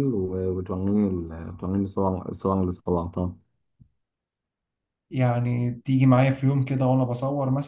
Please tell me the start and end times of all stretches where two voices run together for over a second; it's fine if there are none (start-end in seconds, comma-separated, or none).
none